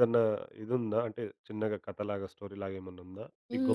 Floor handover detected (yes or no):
yes